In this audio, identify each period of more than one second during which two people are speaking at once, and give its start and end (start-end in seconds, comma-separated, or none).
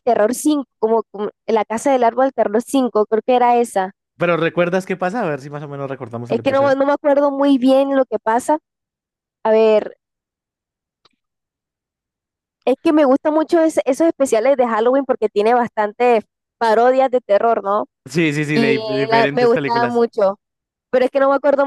18.5-20.1